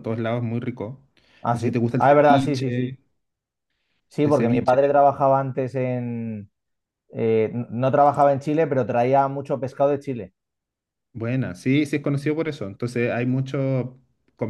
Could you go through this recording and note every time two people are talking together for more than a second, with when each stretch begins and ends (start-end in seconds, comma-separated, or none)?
1.5-3.0